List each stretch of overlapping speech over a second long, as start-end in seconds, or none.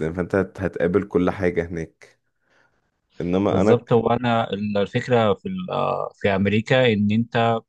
none